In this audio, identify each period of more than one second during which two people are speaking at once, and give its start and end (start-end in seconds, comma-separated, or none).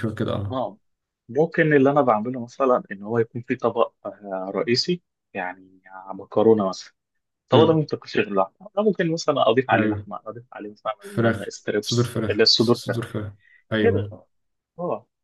11.0-13.1